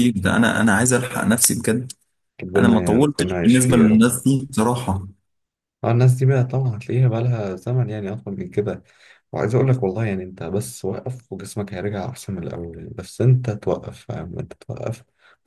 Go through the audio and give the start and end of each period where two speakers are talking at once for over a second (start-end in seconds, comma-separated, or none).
2.6-4.1